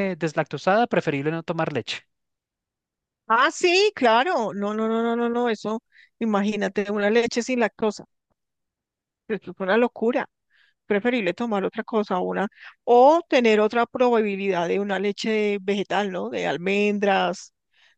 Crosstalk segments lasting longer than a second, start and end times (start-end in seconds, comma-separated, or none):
none